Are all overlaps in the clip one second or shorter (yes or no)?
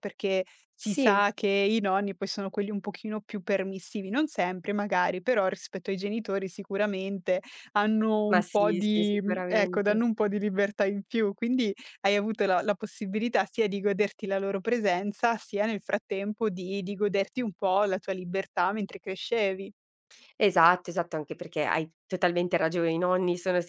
no